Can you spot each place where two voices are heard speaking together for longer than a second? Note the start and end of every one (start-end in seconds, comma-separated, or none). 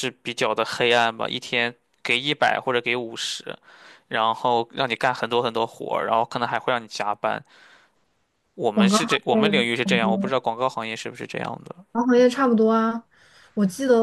8.7-10.3